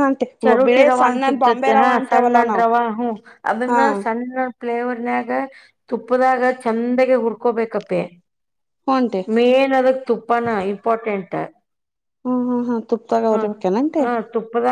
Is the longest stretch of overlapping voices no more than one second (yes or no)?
no